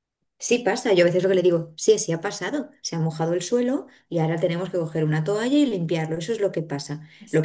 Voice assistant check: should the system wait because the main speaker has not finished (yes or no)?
yes